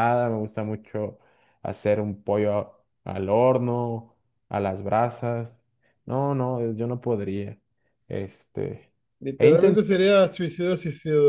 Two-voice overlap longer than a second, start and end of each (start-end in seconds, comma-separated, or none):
none